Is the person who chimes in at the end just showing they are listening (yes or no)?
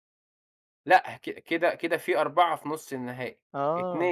yes